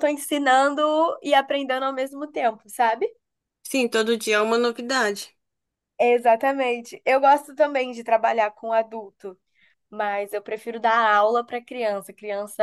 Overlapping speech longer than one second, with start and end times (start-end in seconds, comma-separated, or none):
none